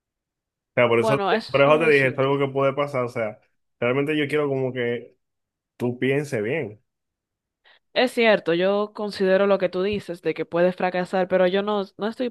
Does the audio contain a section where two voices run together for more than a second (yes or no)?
yes